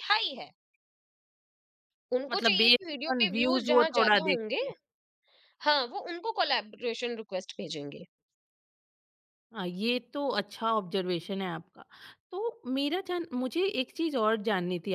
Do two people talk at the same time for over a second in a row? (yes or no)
yes